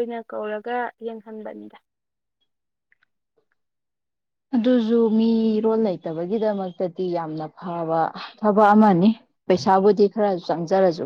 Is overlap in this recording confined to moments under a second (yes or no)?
yes